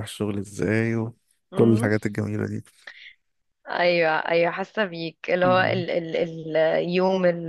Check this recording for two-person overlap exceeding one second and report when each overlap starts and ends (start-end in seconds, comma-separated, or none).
none